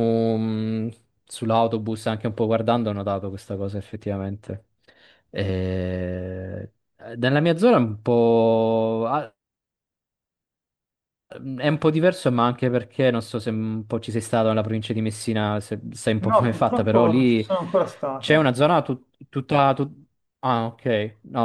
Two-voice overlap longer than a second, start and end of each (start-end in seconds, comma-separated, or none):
16.2-17.5